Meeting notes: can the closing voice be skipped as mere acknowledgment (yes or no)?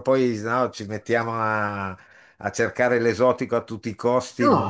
no